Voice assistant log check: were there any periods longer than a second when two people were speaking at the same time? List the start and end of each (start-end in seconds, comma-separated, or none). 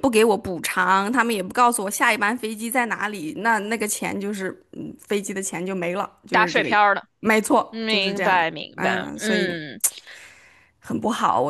7.7-9.6